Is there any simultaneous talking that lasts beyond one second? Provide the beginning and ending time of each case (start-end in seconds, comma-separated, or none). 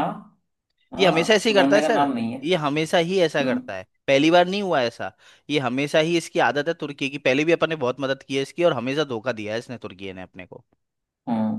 1.0-2.4